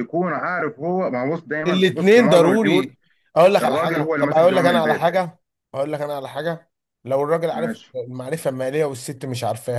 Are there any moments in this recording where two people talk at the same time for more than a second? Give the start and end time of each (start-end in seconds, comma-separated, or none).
1.7-2.9, 3.6-5.0